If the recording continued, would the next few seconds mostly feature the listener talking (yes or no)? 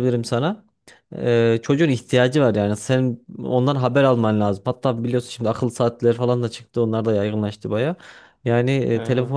no